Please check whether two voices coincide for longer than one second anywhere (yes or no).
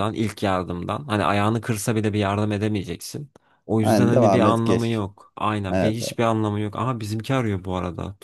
yes